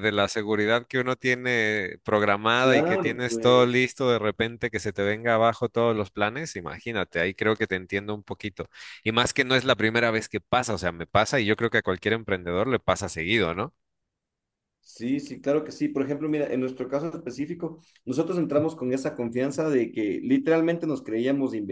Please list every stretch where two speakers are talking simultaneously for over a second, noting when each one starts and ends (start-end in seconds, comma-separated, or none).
2.6-3.9